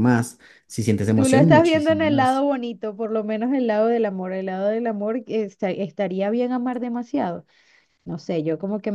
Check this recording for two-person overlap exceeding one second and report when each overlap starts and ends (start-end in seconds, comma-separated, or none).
1.1-2.4